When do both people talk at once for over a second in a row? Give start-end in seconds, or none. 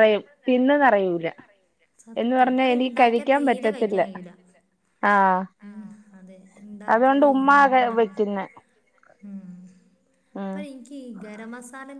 2.2-4.0